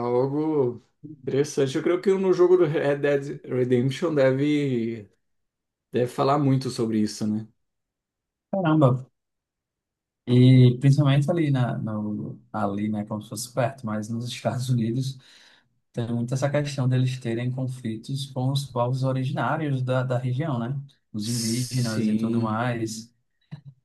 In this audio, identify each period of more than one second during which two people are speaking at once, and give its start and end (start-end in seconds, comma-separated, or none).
21.2-22.6